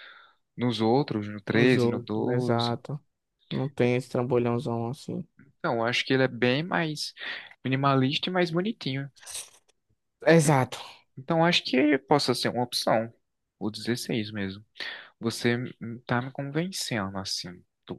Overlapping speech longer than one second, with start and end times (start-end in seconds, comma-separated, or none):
1.5-2.8